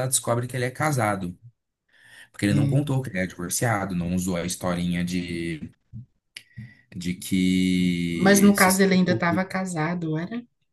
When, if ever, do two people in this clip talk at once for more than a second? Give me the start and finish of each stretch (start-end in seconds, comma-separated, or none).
8.1-9.5